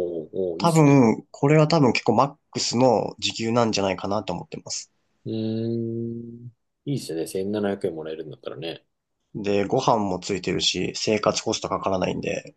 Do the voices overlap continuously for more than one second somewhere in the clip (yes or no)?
no